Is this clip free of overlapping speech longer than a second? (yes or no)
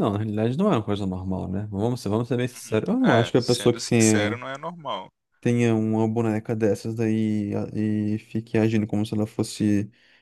no